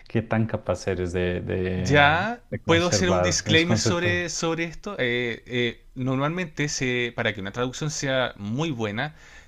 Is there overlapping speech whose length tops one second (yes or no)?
yes